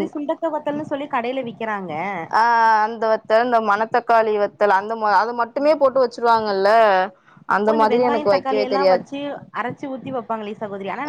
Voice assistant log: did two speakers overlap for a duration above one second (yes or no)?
no